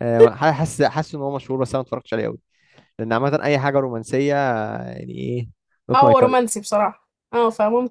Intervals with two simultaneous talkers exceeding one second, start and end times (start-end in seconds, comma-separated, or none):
none